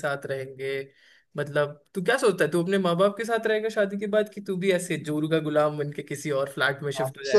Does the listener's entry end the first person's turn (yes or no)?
yes